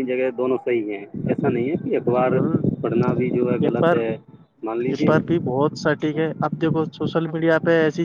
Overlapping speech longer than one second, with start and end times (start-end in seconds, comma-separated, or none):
none